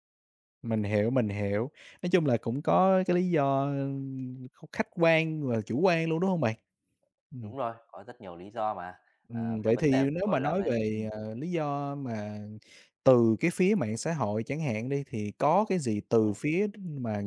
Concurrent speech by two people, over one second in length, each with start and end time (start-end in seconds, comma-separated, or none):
9.3-11.1